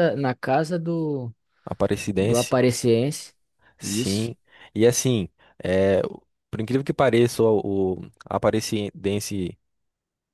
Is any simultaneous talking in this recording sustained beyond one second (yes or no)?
no